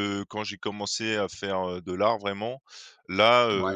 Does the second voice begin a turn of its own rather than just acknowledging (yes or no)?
no